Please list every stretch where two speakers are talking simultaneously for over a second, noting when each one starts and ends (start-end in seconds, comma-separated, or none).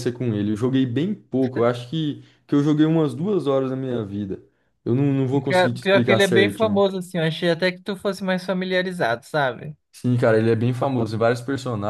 5.5-6.8